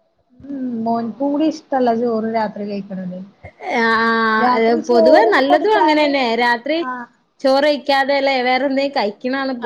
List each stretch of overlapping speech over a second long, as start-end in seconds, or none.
4.4-6.1